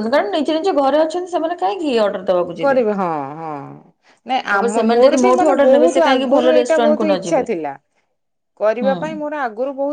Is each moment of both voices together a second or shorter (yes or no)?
no